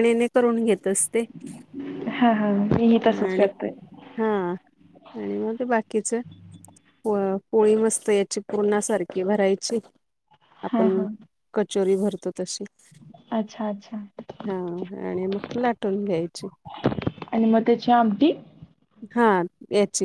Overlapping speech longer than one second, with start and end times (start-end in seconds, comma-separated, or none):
none